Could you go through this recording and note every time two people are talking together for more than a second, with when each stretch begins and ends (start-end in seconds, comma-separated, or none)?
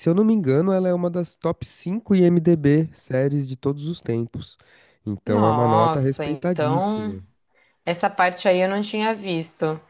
5.2-7.2